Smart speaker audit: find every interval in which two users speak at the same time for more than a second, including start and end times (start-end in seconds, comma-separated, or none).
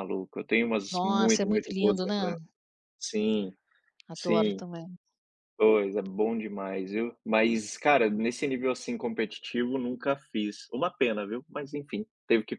0.9-2.3